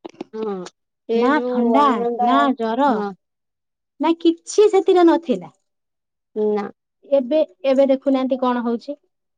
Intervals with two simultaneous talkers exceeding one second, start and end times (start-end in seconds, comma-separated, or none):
none